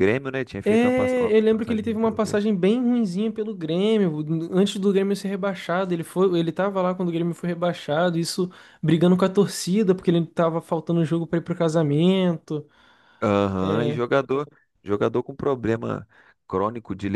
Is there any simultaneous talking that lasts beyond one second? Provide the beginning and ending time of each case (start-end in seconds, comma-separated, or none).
0.6-2.4